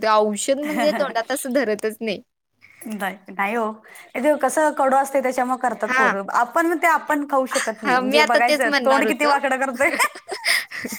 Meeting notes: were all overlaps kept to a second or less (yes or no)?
no